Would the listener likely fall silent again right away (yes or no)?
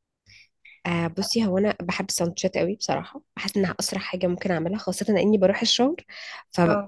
yes